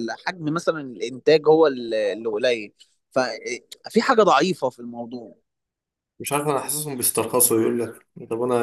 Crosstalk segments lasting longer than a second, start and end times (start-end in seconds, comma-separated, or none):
none